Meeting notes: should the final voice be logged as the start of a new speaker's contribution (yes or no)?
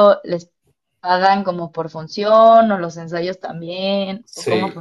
yes